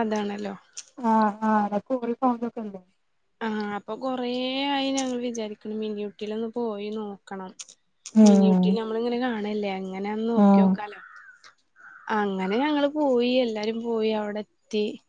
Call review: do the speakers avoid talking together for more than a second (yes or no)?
yes